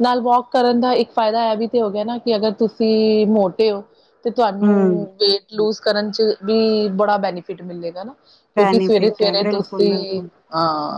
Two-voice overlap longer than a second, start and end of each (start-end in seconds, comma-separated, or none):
8.6-10.3